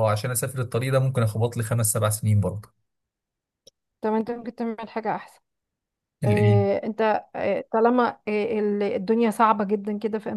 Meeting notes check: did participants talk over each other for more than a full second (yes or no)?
no